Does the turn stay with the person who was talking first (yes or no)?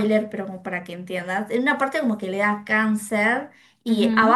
yes